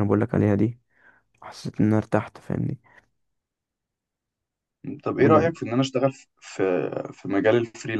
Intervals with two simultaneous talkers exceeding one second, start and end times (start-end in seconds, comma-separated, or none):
none